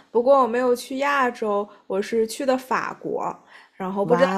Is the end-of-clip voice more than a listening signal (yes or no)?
no